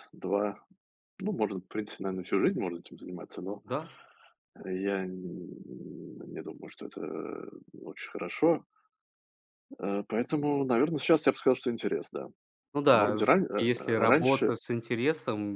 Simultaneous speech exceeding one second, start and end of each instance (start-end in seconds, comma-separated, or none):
12.9-14.5